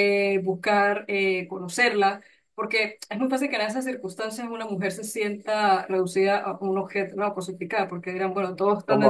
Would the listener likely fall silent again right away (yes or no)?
yes